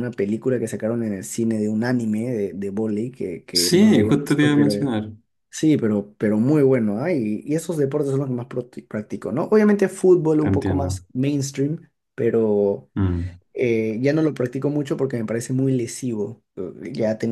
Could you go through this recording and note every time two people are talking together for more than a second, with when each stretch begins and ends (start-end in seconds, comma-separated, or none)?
3.5-4.7